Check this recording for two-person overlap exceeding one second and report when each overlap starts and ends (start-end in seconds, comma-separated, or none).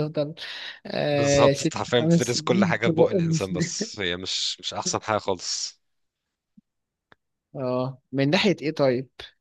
1.1-3.8